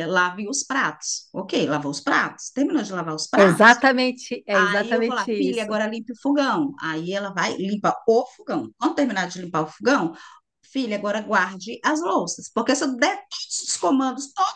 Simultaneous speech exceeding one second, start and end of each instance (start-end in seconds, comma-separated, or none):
4.5-5.8